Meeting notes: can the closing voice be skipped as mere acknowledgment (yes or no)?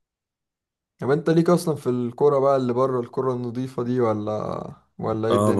no